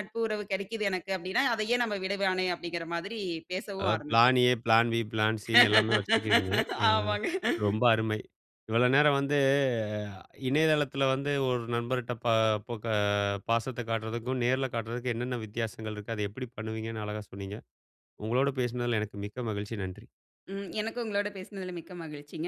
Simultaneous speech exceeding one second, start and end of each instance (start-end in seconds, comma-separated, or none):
none